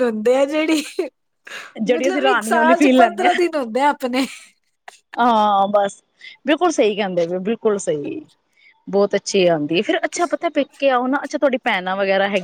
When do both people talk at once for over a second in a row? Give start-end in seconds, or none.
1.9-3.2